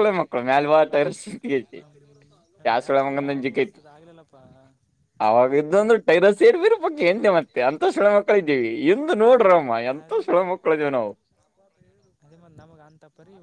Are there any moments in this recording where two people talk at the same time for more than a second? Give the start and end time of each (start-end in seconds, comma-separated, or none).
none